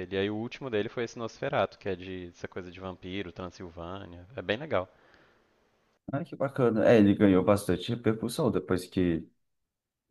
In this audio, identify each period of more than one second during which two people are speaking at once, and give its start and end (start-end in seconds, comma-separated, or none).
none